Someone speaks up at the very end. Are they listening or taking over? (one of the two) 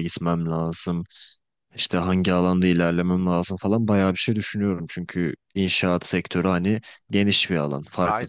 taking over